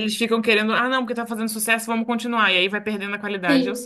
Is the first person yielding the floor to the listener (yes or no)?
yes